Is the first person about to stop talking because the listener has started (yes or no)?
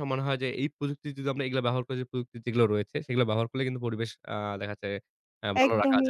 yes